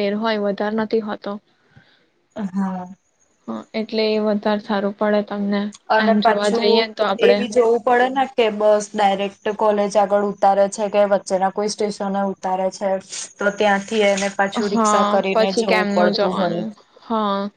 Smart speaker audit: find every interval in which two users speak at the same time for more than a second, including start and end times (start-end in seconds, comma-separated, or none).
14.7-16.6